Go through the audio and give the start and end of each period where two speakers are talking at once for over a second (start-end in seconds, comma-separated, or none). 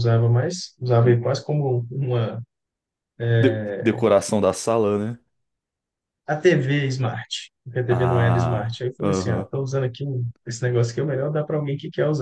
7.9-9.5